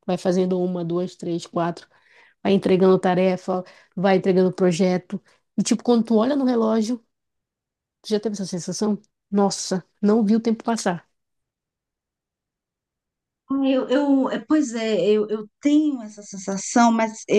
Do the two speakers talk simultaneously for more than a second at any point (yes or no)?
no